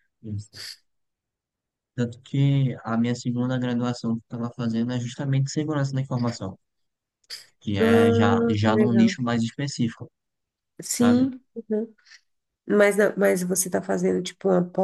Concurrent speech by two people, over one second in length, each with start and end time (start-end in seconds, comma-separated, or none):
7.8-9.2